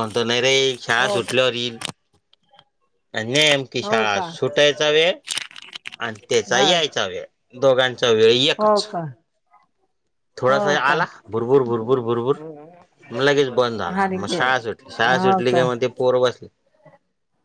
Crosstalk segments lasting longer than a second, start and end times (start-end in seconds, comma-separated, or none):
none